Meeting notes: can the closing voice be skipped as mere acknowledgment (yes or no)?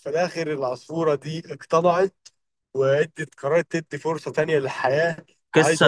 no